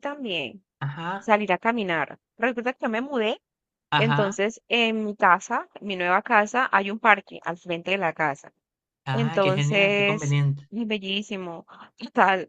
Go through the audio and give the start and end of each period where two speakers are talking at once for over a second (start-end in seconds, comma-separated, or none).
9.1-10.7